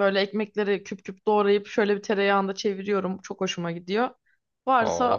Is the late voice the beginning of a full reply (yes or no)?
no